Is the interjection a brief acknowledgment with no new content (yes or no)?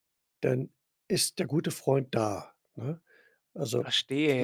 no